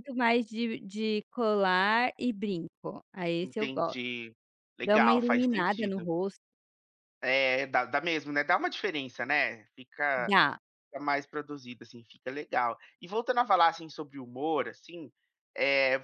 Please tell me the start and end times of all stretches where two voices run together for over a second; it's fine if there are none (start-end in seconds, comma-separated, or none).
4.8-6.1